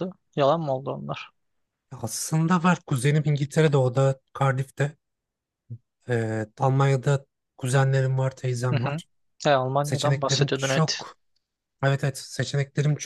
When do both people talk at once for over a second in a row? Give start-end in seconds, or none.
9.8-11.0